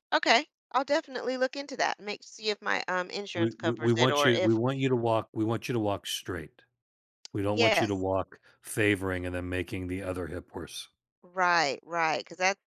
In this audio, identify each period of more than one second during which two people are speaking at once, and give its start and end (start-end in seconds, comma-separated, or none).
3.3-4.6